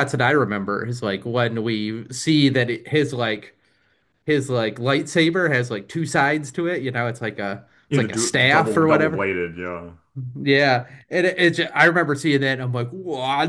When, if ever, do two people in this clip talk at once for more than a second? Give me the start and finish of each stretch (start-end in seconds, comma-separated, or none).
7.9-9.3